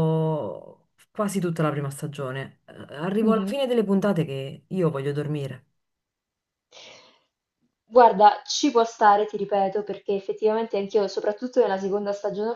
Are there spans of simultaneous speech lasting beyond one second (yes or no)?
no